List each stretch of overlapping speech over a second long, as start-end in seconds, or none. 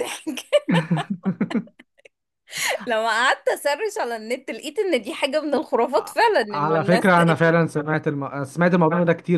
none